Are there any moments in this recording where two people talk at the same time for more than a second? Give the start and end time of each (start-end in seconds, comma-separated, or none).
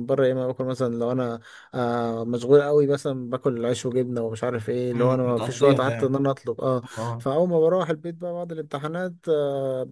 4.9-6.2